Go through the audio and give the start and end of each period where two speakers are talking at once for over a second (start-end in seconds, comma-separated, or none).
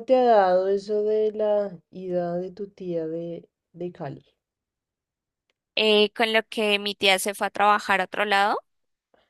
none